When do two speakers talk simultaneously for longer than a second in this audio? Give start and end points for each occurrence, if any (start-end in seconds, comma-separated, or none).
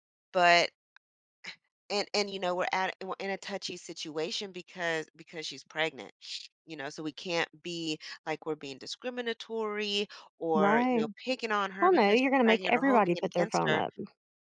11.8-13.8